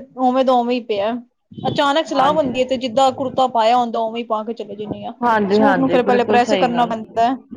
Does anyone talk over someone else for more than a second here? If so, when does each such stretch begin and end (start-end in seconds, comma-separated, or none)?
5.5-6.9